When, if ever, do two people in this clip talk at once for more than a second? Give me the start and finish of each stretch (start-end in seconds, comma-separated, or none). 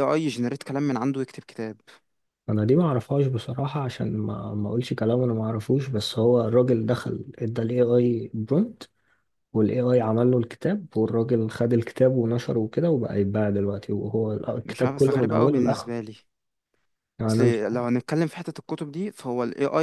14.6-16.0